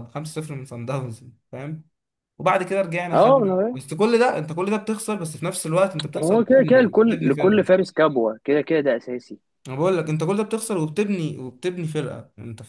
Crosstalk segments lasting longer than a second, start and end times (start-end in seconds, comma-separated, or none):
6.2-7.7